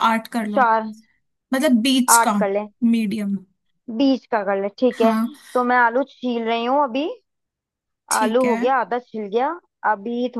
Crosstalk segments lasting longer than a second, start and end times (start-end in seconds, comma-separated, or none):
none